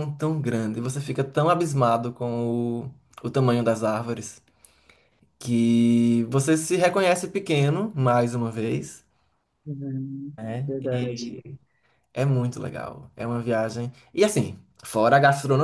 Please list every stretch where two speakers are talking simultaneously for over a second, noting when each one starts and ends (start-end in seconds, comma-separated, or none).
none